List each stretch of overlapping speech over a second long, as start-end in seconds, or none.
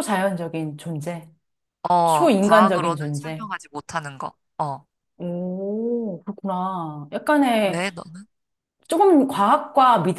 2.0-3.5